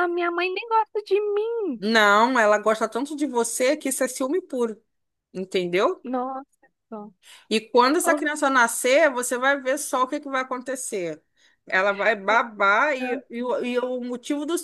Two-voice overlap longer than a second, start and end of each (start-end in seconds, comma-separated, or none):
none